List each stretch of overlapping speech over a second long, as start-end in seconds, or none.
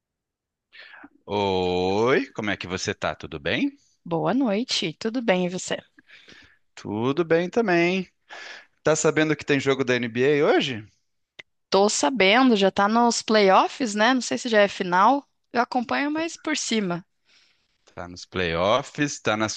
none